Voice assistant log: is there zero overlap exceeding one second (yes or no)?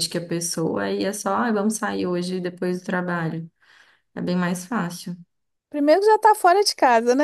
yes